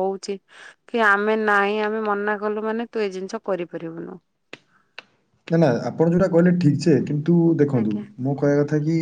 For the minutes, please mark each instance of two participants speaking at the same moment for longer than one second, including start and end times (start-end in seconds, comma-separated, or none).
none